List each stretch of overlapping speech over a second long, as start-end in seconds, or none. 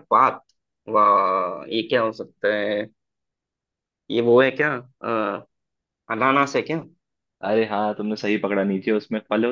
none